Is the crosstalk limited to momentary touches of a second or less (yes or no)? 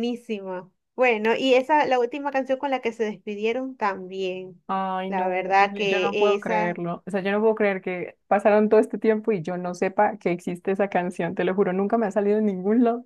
no